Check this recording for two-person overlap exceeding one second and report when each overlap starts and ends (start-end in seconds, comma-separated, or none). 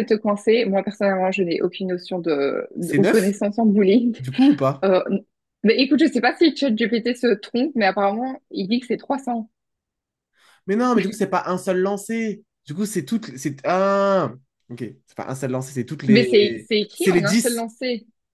16.1-17.6